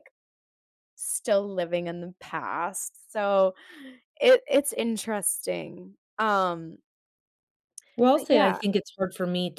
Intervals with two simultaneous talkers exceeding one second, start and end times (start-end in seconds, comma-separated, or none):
none